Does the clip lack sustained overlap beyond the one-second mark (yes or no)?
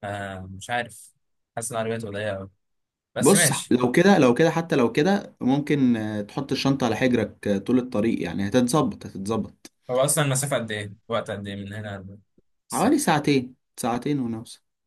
yes